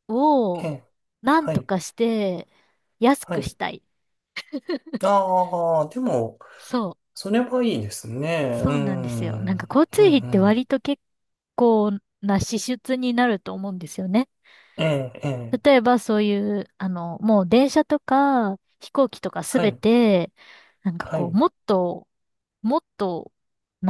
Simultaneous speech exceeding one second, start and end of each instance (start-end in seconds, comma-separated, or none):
8.6-10.6